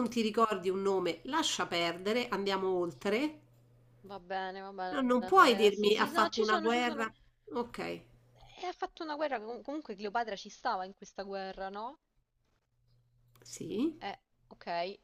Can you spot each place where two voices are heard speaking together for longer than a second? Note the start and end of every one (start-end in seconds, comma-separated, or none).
4.9-7.1